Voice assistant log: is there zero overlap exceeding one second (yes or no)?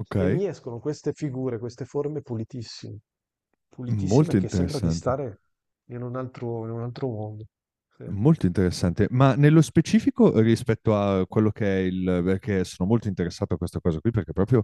no